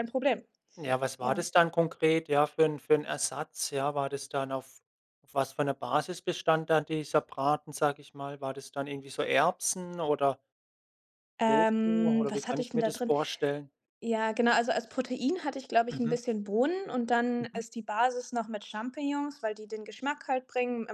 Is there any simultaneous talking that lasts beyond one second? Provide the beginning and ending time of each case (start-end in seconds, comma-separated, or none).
11.5-13.1